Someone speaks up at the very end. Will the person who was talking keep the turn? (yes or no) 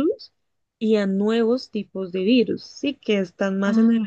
yes